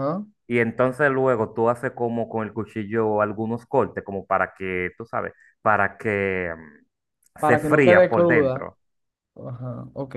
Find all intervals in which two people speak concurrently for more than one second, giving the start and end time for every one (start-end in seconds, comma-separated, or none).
7.4-8.7